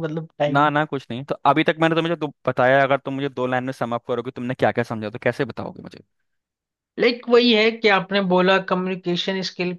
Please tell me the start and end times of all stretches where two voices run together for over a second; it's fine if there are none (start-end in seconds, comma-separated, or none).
none